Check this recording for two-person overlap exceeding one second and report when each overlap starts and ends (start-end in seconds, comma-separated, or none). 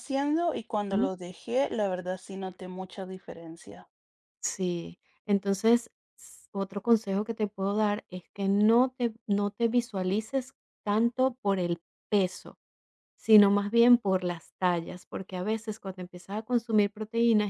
none